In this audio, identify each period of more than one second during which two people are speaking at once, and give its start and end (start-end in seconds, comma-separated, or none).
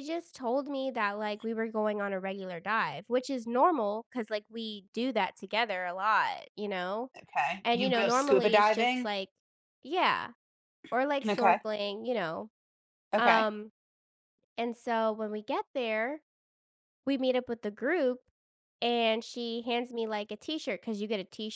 7.6-9.1